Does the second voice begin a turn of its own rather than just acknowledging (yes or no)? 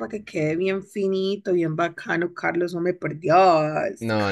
yes